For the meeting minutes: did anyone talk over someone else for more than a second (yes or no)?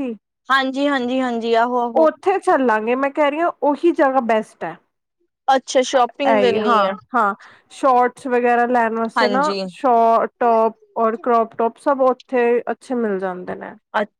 no